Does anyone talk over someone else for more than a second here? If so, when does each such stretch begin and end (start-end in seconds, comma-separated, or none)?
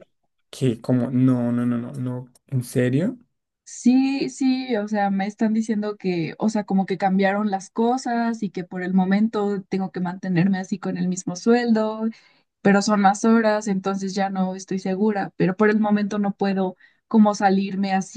none